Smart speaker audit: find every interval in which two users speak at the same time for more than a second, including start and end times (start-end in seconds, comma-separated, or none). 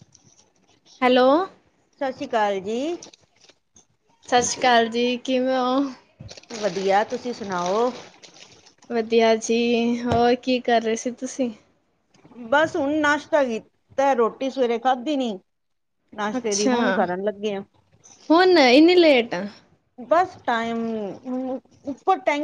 none